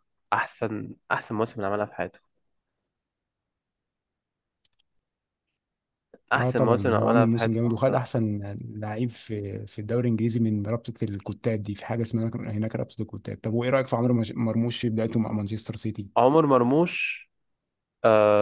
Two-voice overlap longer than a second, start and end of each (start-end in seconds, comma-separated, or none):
6.4-8.0